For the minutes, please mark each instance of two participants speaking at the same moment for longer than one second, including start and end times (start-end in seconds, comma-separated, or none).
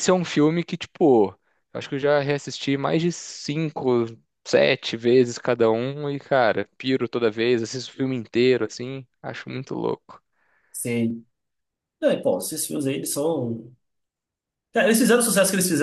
none